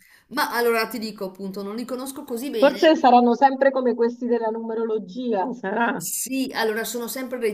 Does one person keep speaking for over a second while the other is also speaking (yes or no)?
no